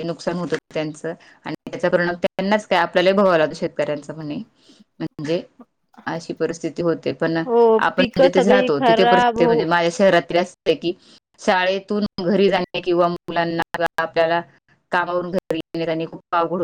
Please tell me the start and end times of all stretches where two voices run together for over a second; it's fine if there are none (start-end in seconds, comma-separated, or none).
7.8-9.5